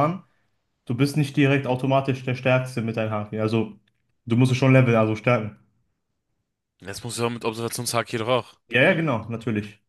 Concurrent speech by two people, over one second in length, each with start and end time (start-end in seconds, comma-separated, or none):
none